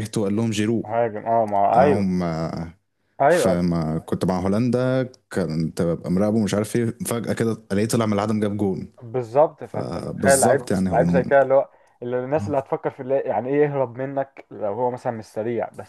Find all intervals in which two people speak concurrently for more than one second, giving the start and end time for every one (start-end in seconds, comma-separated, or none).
9.6-11.2